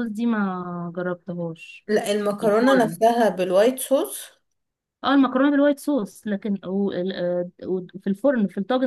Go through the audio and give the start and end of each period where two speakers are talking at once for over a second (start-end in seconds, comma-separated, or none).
none